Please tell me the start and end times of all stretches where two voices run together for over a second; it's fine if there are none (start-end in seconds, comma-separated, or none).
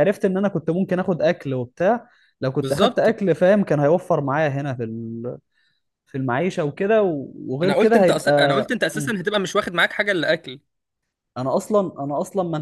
7.6-9.2